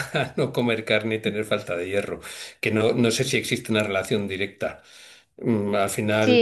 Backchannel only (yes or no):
no